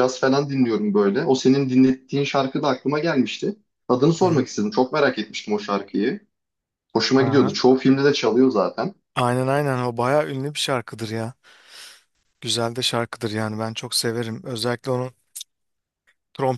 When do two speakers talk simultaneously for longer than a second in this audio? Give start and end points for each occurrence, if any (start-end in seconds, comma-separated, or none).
none